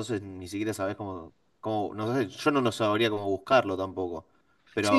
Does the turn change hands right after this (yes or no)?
yes